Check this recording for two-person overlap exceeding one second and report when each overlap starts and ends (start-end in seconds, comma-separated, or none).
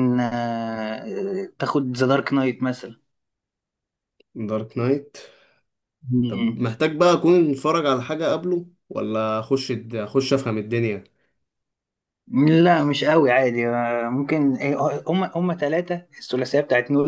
none